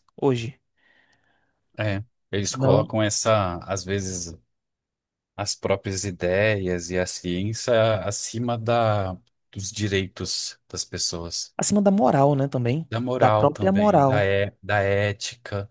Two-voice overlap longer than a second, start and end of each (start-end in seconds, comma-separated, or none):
12.9-14.3